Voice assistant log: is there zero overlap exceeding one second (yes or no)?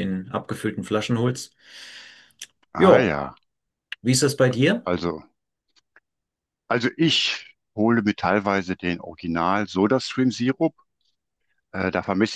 yes